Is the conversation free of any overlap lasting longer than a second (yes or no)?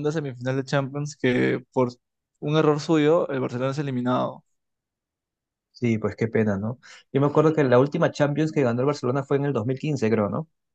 yes